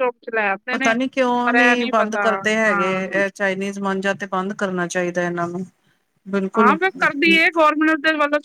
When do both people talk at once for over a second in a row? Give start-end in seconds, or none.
none